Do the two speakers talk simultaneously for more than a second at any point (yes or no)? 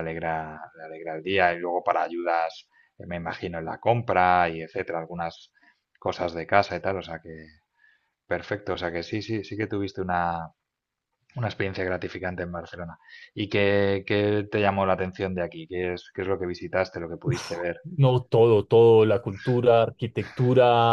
no